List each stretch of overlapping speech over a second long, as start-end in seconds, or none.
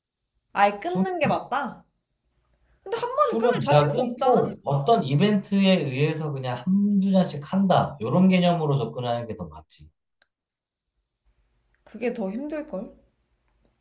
3.2-4.5